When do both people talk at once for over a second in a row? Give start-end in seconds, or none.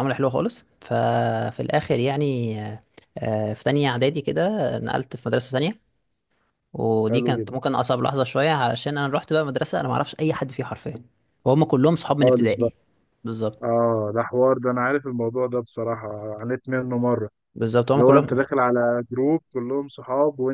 none